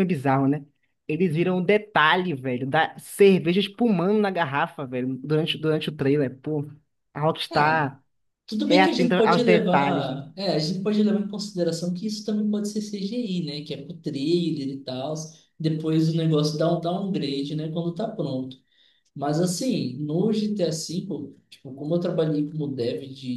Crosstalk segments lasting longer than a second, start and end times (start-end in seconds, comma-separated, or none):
8.7-10.2